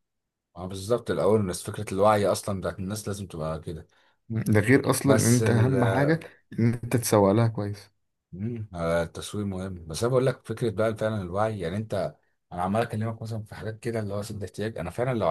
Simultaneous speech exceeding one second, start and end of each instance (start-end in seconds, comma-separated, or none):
none